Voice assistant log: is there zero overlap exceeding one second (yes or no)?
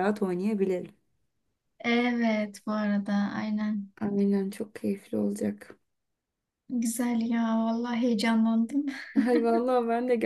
yes